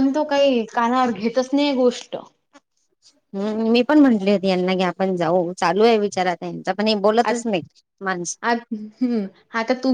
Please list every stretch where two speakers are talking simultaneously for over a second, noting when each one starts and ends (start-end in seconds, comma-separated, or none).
none